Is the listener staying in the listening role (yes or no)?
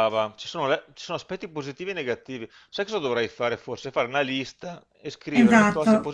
no